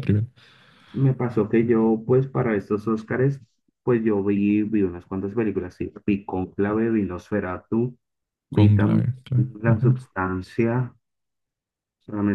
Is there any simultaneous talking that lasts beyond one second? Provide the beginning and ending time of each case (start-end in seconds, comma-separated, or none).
8.5-10.0